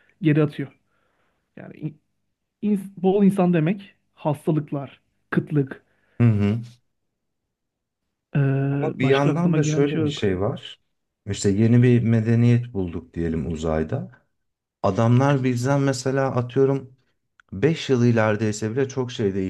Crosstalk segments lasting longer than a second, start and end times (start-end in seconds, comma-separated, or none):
8.9-10.2